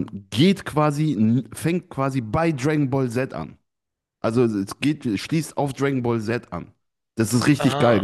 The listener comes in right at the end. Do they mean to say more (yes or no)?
no